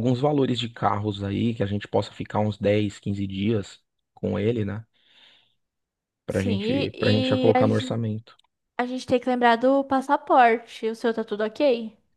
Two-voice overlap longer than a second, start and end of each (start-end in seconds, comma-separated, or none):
6.3-8.0